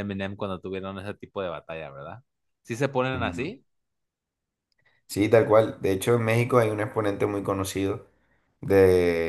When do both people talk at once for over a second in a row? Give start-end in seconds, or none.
none